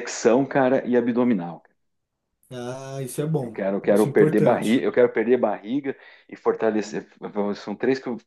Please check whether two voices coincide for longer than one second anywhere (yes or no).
yes